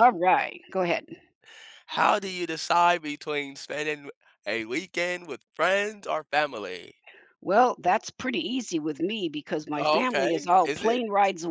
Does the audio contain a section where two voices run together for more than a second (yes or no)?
yes